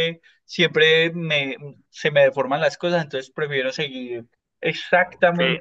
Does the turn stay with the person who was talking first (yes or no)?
no